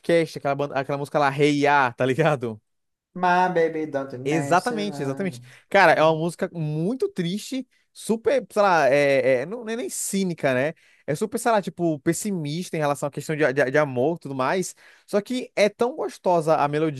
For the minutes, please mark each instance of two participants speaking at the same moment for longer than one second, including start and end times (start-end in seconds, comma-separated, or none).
4.2-5.5